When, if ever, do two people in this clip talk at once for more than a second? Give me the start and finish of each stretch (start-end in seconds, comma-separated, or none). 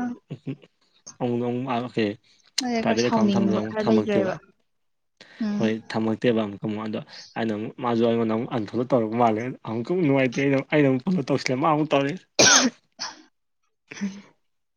2.8-4.3